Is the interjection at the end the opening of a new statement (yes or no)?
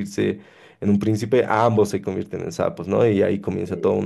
no